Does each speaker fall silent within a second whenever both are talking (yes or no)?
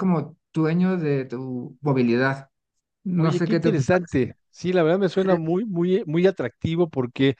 no